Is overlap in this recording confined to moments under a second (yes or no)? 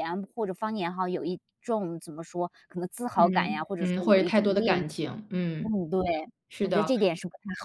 no